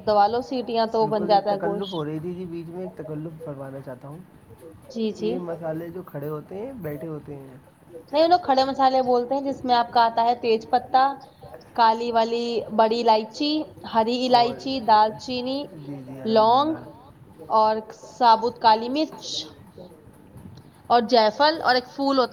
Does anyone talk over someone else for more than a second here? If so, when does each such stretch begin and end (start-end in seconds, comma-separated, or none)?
none